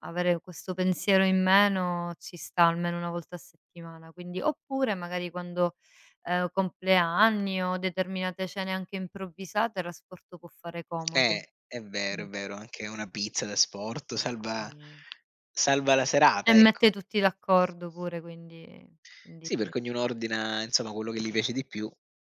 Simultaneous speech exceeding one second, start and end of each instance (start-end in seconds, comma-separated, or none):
none